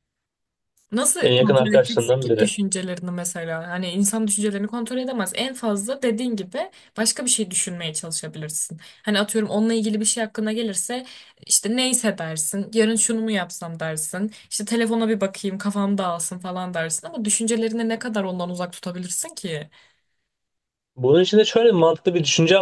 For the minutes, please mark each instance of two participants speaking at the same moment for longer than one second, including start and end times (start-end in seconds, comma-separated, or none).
1.2-2.5